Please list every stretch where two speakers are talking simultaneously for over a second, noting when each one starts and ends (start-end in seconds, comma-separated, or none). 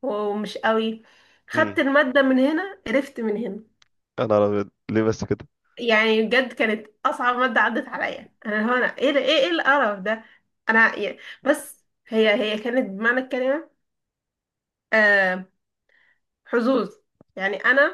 none